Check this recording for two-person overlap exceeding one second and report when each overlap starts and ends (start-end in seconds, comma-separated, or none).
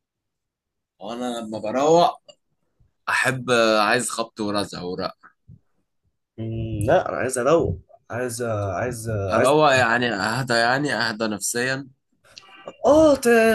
none